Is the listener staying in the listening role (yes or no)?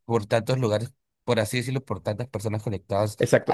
no